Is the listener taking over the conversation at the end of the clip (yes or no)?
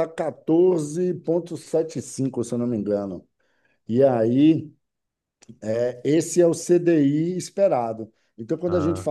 no